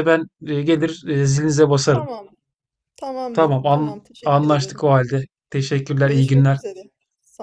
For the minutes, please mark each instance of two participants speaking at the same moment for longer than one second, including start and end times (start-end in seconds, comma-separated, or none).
3.3-4.8